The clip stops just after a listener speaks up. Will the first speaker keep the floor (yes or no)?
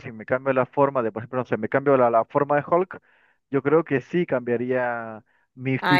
no